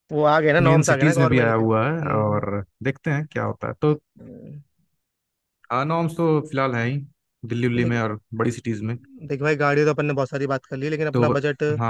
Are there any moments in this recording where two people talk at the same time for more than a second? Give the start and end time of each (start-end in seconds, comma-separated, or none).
0.7-2.4